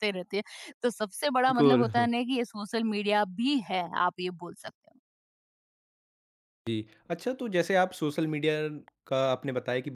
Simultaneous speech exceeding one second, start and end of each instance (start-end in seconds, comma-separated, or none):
none